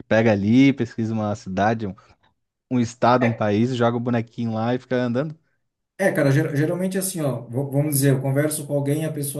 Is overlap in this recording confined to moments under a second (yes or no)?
yes